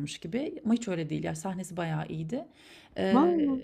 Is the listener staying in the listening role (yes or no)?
yes